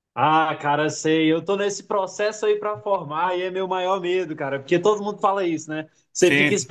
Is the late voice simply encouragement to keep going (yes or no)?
yes